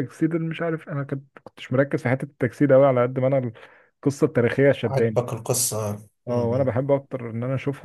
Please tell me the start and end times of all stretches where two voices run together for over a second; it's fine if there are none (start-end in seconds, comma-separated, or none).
none